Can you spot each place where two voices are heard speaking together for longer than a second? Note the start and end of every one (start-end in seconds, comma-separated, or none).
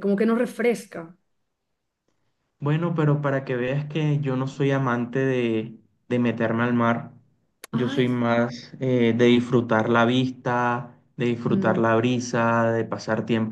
none